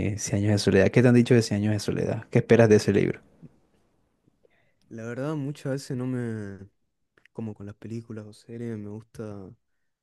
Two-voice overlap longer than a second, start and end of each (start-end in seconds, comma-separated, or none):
none